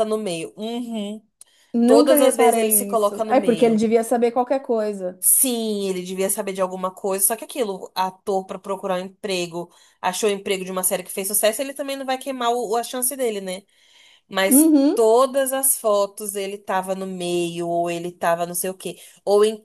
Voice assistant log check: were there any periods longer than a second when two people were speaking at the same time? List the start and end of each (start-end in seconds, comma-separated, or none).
1.8-3.8